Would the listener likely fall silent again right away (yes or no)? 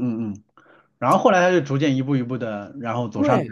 no